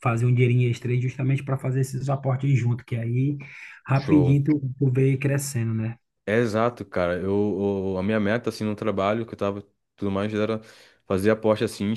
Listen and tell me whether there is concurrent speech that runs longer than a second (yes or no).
no